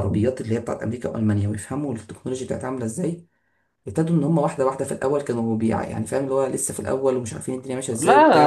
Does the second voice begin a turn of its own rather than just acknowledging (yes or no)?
yes